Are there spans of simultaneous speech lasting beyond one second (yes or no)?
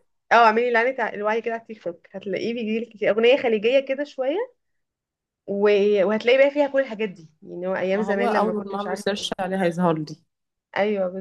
yes